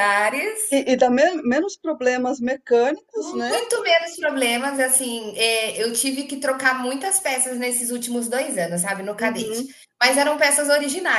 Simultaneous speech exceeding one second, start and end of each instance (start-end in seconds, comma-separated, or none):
none